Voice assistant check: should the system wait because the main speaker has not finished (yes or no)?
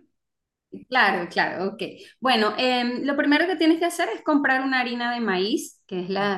yes